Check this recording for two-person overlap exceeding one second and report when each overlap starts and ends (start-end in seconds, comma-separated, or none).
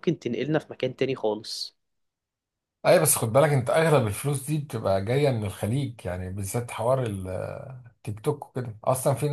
none